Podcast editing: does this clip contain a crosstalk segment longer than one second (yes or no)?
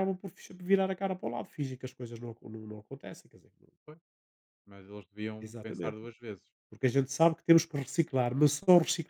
no